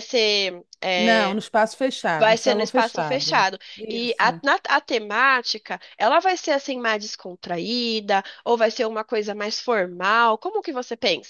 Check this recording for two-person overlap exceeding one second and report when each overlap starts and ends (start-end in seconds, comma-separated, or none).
2.2-4.4